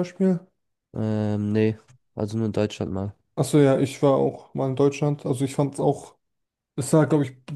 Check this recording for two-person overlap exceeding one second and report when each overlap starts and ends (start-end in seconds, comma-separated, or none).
none